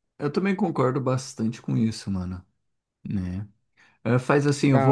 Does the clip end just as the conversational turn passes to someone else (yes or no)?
no